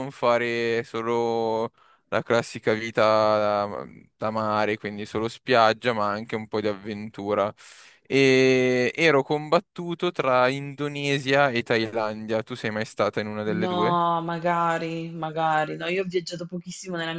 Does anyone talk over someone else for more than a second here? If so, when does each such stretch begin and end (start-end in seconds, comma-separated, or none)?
none